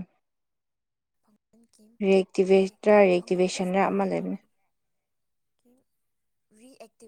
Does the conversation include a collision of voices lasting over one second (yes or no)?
yes